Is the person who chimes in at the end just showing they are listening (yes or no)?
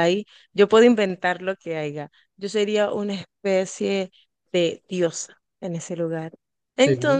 yes